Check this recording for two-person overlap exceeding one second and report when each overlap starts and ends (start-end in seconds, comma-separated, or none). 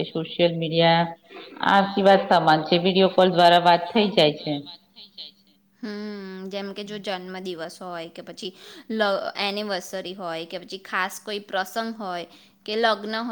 none